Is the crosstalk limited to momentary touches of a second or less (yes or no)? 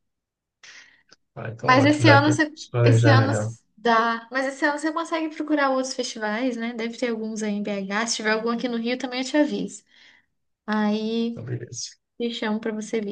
no